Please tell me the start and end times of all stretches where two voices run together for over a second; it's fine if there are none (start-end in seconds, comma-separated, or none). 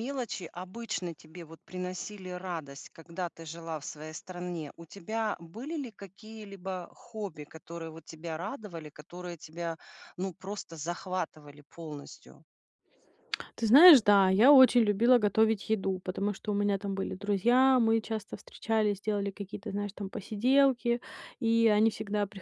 none